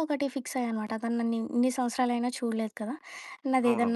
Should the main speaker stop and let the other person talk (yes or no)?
no